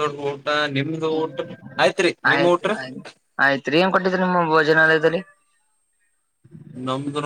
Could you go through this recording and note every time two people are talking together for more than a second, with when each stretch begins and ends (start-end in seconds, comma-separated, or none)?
none